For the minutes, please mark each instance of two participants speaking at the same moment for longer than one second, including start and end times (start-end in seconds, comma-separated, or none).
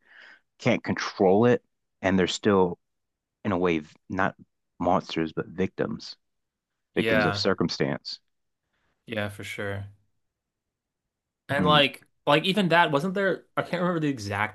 none